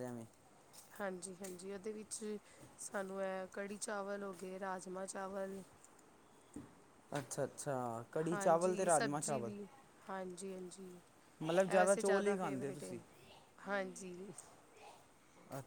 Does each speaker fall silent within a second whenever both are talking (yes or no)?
no